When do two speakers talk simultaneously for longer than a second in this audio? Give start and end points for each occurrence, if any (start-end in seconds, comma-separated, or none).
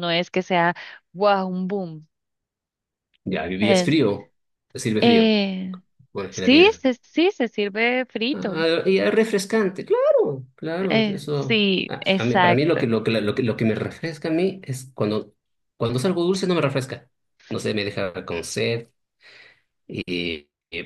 10.9-12.8